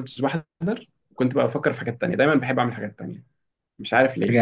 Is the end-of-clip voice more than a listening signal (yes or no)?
no